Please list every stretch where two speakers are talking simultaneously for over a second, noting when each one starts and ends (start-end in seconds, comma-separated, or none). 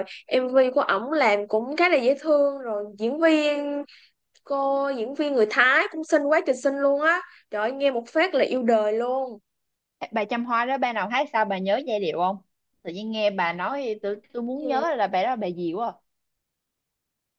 none